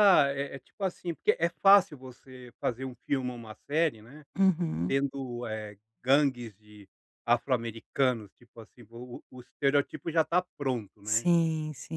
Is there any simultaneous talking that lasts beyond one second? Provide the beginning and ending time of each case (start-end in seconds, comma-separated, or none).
none